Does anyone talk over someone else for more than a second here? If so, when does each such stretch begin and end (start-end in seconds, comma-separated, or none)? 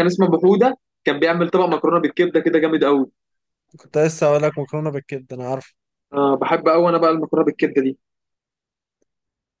none